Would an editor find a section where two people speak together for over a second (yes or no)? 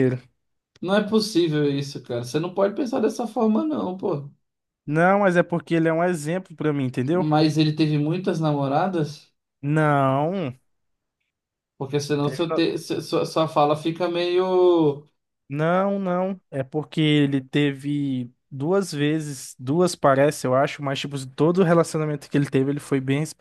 no